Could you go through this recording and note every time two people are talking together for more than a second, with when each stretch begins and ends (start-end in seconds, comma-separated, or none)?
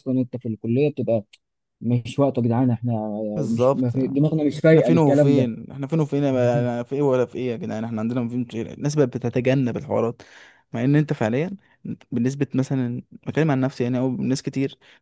3.5-5.5